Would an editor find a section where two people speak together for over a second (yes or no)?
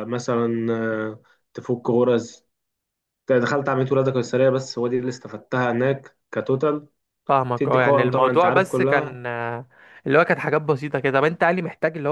yes